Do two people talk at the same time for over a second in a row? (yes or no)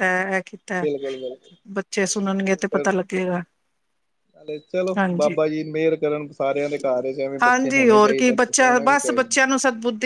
yes